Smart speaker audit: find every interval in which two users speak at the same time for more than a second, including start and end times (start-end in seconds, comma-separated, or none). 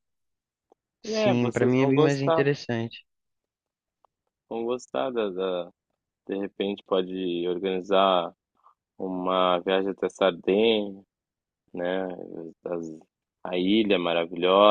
1.1-2.5